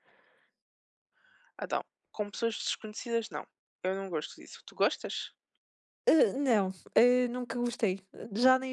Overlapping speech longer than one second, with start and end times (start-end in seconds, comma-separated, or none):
none